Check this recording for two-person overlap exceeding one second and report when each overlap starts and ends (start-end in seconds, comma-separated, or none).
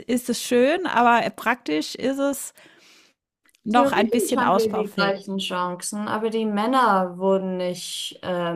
3.7-5.4